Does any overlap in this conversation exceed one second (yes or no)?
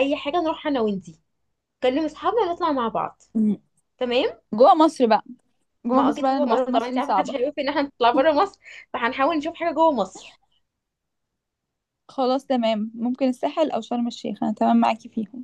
yes